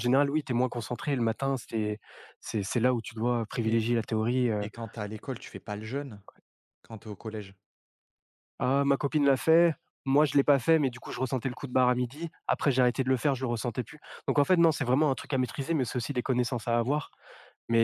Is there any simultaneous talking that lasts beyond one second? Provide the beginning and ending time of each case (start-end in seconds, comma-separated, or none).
none